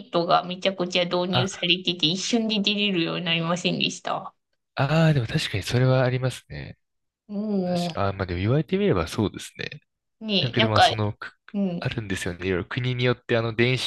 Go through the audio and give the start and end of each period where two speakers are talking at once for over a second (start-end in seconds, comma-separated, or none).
none